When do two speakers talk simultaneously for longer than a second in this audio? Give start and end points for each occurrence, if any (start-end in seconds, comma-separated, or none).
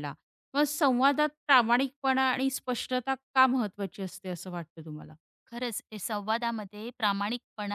none